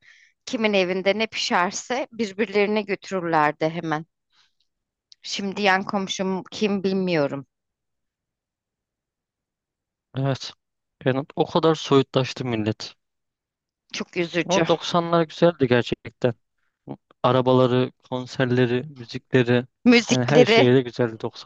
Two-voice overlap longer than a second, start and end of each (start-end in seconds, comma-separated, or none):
none